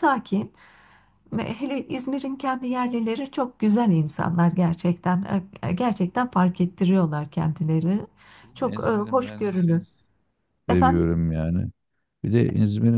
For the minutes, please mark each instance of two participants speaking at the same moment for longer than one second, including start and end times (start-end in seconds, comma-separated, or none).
8.5-9.8